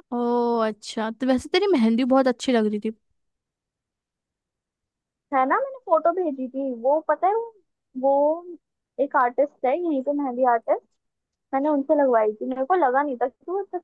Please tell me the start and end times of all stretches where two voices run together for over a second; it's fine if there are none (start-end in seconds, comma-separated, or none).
none